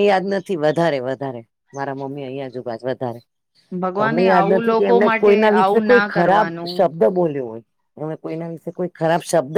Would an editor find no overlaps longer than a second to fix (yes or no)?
no